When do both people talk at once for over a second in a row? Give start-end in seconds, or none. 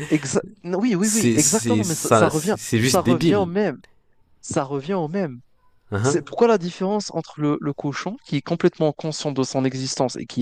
1.0-3.5